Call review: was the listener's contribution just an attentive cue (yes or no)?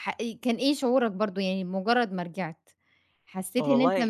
yes